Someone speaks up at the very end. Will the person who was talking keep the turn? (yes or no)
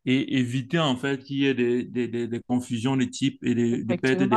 no